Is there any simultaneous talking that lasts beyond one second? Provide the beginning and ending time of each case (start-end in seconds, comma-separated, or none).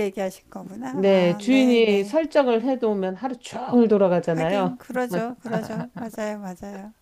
0.9-2.1